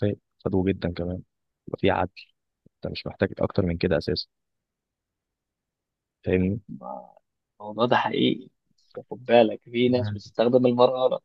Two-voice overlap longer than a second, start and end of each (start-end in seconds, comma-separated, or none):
none